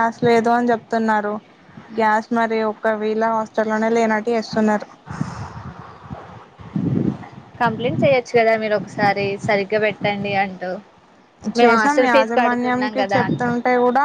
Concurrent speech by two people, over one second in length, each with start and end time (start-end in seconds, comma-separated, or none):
11.6-13.5